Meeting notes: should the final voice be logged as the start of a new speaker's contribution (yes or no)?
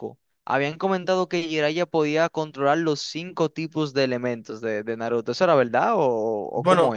yes